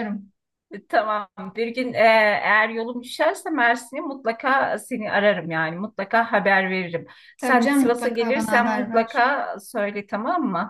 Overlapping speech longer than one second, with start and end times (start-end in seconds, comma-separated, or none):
7.4-9.3